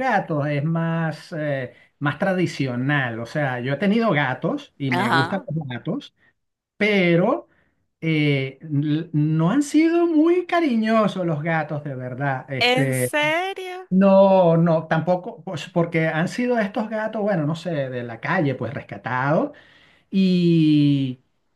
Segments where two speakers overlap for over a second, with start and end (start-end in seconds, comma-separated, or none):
none